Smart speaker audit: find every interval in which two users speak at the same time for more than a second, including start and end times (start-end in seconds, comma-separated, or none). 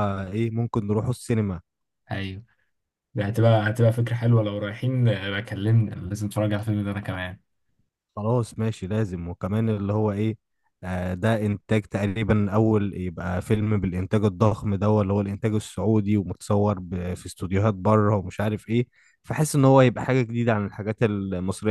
none